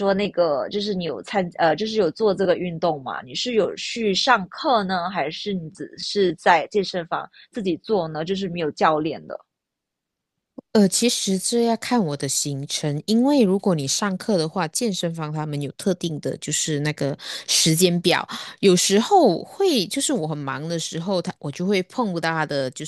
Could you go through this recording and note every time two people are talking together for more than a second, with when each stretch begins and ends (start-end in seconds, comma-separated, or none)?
none